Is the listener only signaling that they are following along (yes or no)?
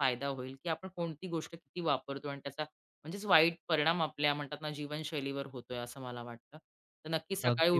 yes